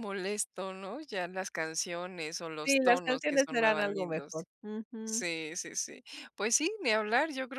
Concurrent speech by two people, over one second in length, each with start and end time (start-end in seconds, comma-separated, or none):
2.6-4.5